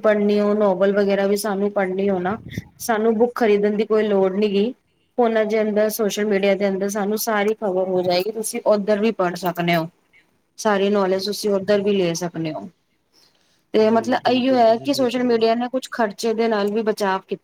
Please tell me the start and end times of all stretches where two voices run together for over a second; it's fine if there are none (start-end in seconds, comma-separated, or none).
13.8-15.5